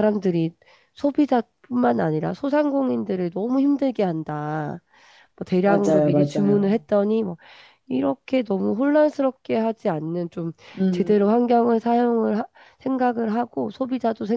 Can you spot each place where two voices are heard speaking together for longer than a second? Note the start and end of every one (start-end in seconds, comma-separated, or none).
5.6-6.9